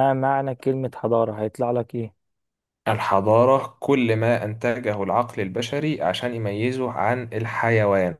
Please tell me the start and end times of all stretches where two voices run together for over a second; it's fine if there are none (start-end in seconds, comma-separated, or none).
none